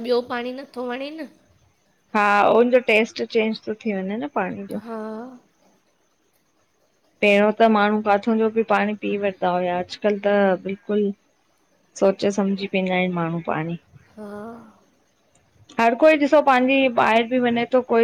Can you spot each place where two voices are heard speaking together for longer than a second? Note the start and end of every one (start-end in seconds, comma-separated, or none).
none